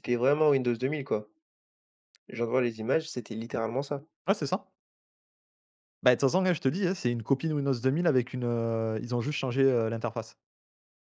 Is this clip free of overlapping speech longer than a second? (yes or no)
yes